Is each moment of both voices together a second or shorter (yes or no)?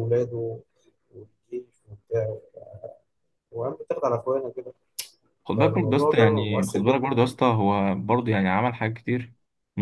no